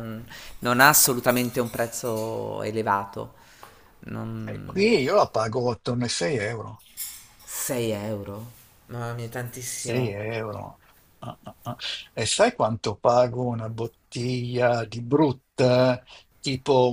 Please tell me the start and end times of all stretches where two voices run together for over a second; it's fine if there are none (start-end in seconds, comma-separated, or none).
none